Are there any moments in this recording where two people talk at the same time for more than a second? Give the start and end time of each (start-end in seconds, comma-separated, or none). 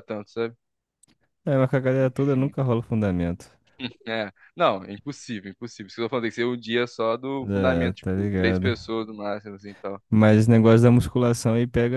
7.4-8.7